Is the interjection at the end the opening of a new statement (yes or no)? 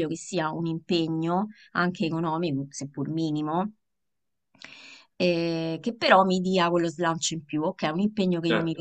no